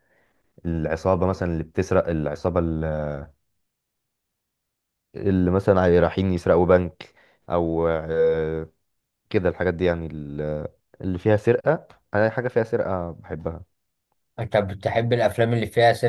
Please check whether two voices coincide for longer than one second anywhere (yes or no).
no